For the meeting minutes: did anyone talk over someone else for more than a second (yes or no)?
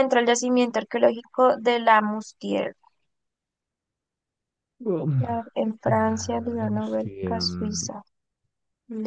yes